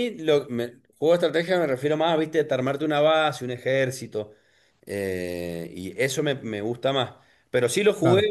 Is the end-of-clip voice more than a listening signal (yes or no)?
no